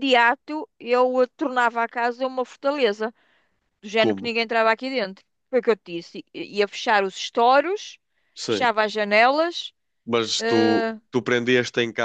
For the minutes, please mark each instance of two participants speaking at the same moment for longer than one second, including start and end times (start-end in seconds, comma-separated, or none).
none